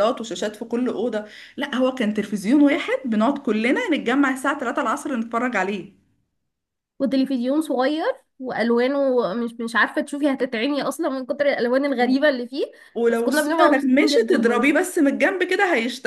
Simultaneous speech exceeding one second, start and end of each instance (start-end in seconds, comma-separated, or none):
13.1-14.7